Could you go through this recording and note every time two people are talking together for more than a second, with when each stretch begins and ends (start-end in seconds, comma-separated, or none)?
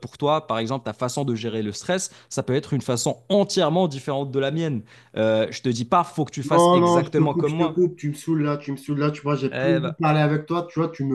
6.4-7.9